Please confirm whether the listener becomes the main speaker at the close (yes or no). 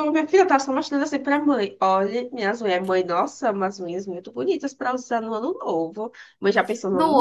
yes